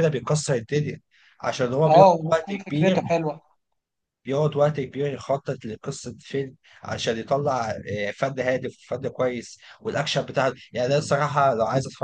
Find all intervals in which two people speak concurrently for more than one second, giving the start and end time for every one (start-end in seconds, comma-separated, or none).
1.9-3.2